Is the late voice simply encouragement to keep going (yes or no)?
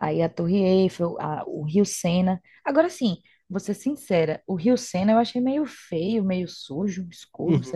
no